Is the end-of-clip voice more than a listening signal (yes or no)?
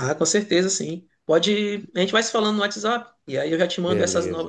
no